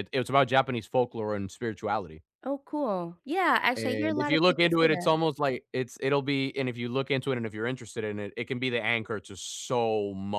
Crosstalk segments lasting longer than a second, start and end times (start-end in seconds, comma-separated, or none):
3.8-5.1